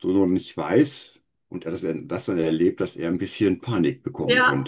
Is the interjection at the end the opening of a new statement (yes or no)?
yes